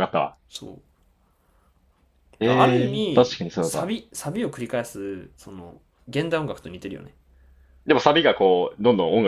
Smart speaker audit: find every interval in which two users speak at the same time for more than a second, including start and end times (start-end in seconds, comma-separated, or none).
2.5-4.0